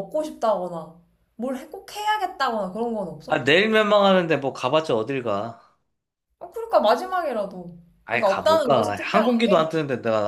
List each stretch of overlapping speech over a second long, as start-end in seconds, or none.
8.1-9.7